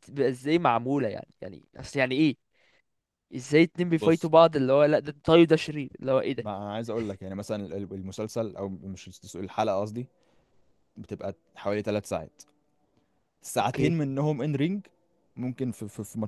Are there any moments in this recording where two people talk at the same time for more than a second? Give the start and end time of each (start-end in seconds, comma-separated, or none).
none